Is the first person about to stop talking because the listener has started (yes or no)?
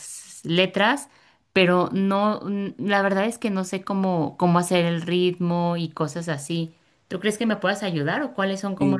yes